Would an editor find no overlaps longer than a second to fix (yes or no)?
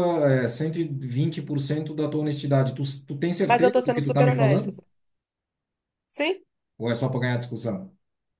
no